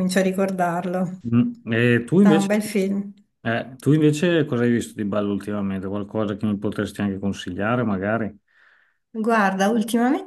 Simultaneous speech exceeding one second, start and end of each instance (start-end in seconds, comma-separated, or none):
none